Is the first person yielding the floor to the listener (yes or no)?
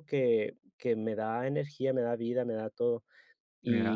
no